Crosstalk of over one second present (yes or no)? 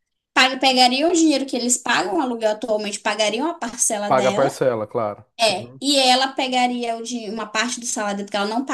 no